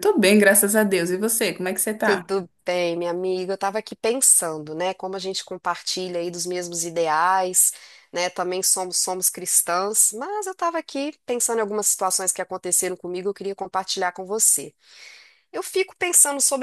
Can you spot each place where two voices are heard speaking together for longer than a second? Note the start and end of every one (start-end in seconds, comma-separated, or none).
none